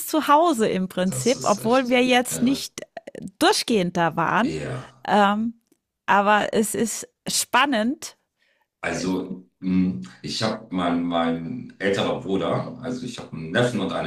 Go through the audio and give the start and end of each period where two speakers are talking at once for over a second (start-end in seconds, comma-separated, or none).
1.1-2.7